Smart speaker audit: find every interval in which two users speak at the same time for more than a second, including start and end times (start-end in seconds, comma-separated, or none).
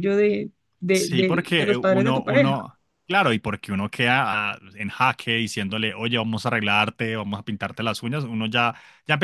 0.9-2.5